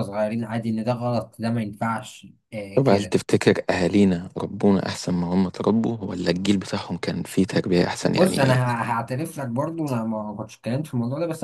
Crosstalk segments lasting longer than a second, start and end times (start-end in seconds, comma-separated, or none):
none